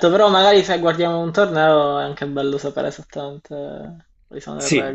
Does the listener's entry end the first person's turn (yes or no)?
yes